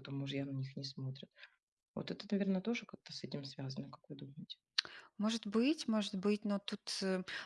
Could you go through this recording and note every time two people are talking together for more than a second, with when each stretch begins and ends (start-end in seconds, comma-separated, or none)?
none